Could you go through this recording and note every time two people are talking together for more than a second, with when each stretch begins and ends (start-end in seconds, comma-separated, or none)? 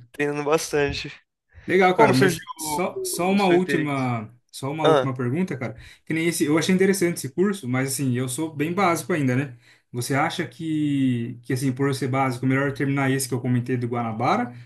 1.9-4.1